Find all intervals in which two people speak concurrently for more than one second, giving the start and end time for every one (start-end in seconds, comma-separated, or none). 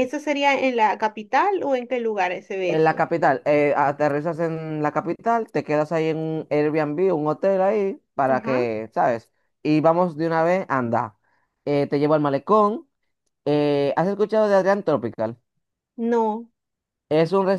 none